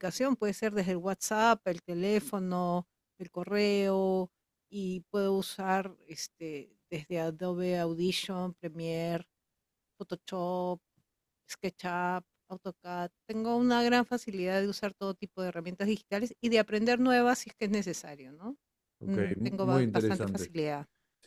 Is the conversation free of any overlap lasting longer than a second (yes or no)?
no